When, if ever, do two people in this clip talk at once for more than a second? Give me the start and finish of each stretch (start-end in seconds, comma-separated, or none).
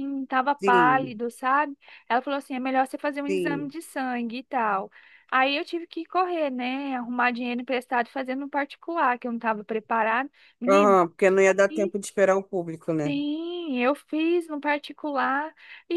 none